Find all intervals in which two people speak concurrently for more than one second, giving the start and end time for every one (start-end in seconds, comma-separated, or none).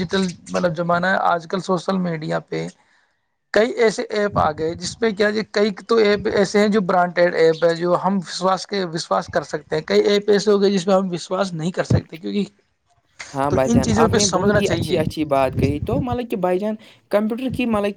13.3-15.0